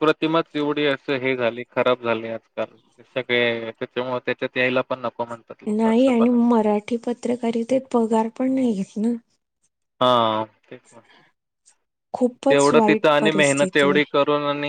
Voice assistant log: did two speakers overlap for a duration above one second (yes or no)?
yes